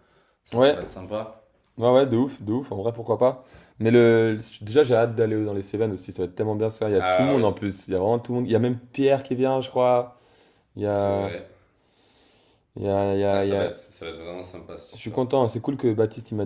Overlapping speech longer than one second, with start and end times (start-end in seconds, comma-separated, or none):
none